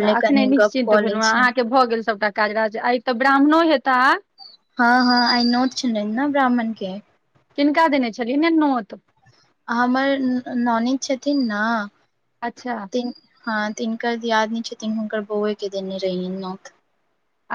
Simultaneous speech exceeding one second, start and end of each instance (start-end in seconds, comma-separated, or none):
none